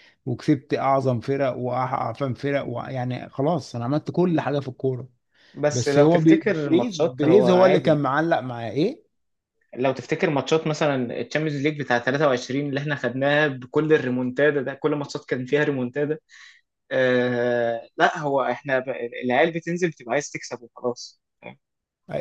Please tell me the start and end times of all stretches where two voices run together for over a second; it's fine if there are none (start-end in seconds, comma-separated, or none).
5.7-8.0